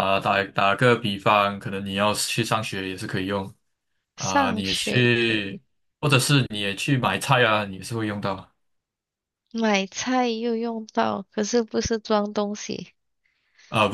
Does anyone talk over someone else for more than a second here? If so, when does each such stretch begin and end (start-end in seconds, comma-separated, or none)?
4.2-5.6